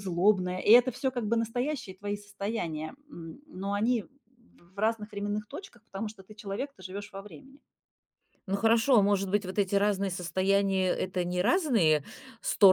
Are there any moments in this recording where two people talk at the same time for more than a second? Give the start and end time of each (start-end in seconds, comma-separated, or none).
none